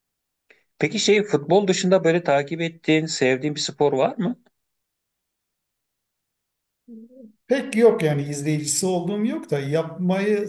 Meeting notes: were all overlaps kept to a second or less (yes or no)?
yes